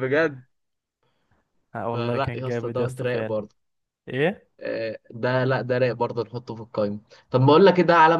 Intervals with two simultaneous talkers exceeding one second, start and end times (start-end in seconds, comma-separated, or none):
1.9-3.4